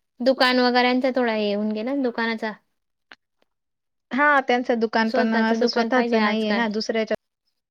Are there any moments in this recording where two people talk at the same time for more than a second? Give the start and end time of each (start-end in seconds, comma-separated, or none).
5.1-6.6